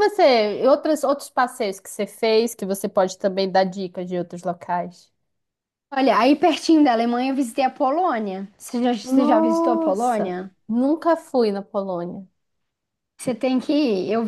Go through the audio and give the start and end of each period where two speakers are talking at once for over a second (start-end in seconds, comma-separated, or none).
9.0-10.5